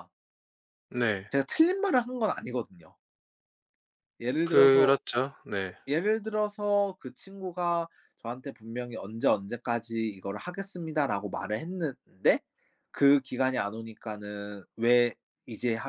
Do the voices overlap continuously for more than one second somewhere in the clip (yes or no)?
no